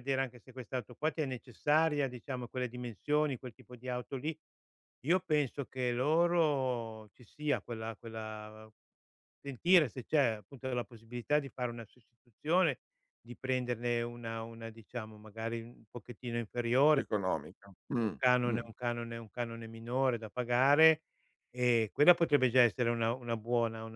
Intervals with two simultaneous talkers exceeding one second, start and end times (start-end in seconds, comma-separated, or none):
none